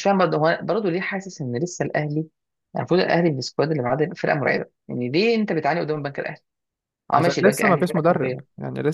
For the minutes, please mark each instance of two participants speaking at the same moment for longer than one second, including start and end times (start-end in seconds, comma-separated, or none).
7.1-8.4